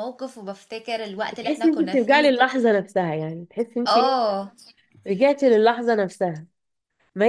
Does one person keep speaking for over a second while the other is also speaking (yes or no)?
yes